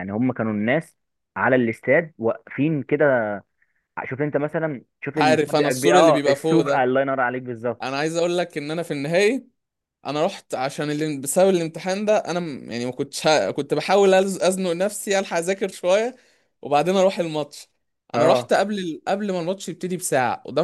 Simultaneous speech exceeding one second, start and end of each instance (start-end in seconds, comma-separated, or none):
5.2-6.9